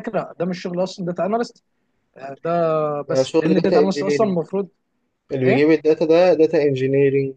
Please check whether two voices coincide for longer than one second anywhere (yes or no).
yes